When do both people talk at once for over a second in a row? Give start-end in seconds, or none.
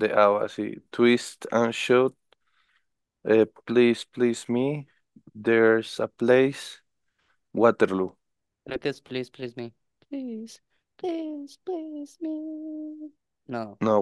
none